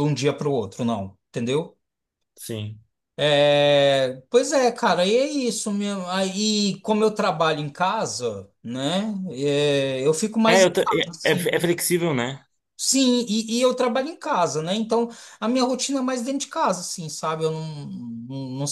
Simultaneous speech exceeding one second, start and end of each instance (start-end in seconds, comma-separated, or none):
10.4-11.7